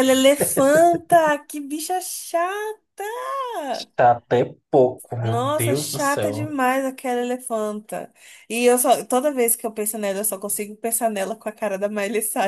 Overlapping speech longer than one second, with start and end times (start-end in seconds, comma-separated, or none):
5.2-6.5